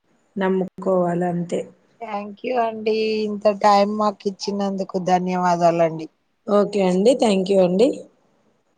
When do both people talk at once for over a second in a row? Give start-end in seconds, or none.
none